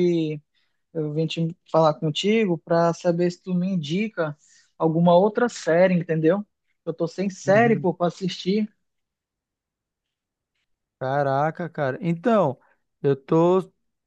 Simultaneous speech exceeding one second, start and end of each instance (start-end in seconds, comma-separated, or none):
none